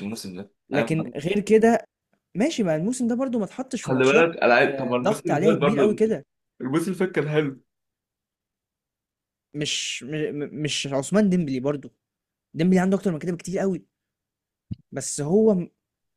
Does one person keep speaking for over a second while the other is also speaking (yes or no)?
yes